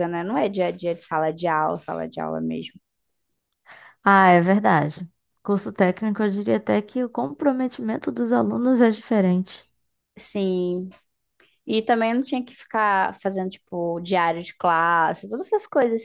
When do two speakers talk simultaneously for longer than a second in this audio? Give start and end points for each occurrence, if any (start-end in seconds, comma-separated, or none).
none